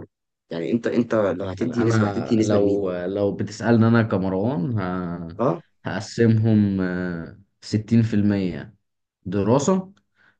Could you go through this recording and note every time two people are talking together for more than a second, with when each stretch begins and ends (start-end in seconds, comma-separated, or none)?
1.6-2.8